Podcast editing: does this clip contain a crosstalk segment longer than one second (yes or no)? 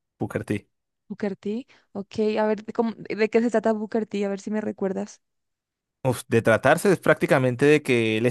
no